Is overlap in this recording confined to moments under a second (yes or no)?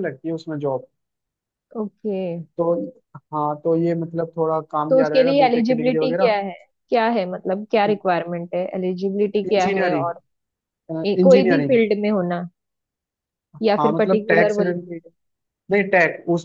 no